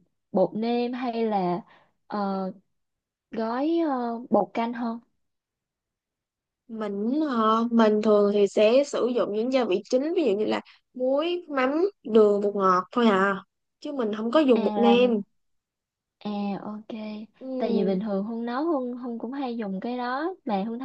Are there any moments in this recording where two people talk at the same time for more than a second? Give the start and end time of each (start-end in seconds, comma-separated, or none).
none